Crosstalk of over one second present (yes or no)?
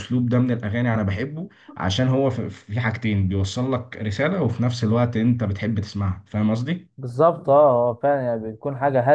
no